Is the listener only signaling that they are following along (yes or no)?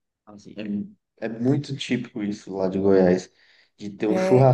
yes